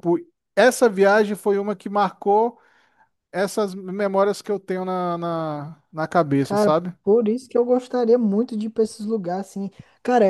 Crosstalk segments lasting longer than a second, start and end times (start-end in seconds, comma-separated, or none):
none